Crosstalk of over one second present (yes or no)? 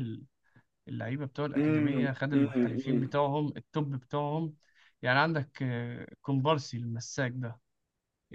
yes